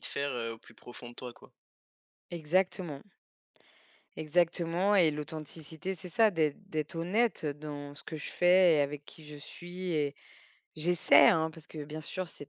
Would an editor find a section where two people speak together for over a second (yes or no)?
no